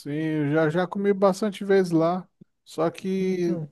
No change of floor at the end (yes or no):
yes